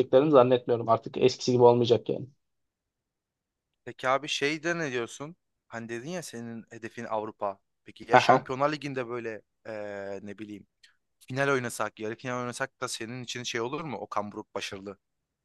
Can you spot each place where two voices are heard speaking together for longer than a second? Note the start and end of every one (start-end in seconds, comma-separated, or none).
none